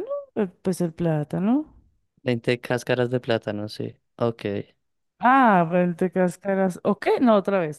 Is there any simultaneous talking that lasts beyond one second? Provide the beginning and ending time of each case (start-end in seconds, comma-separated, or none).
none